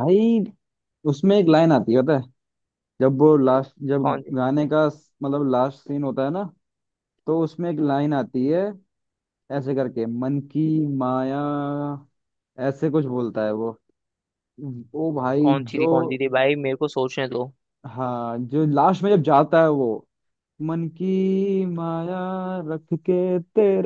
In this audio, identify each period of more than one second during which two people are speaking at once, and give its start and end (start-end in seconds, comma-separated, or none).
none